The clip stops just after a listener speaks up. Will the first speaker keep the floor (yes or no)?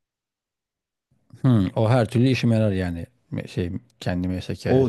no